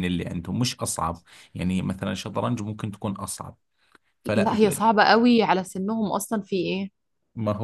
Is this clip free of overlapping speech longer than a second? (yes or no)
yes